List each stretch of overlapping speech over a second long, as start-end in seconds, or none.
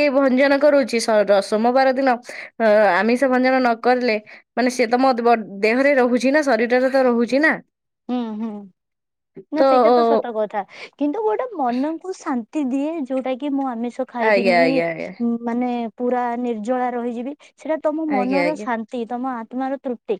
none